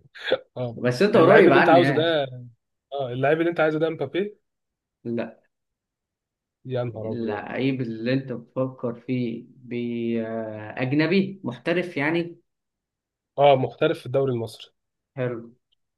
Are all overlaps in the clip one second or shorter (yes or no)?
no